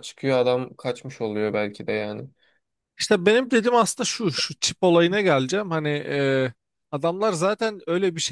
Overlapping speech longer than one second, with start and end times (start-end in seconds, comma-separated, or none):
none